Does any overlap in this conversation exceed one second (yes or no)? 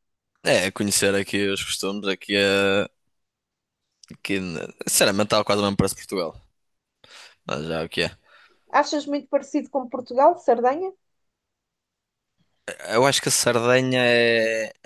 no